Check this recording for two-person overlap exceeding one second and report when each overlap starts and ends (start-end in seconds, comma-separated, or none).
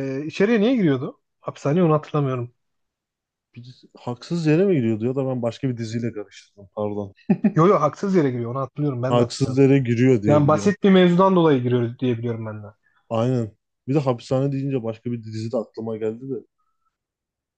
none